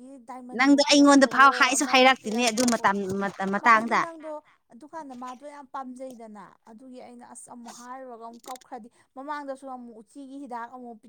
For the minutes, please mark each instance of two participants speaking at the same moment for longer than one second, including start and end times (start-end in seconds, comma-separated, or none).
0.6-2.8